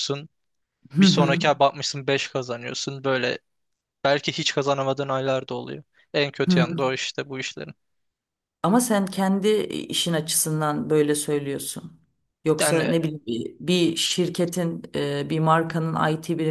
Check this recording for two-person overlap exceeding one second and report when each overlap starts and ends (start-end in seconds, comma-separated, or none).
none